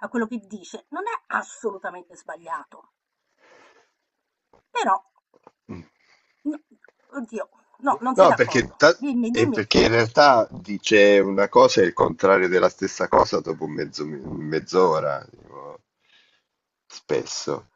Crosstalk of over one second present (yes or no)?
yes